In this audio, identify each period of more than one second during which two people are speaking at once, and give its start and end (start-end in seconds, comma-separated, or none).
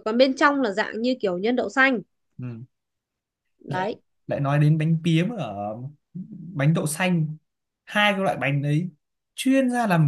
none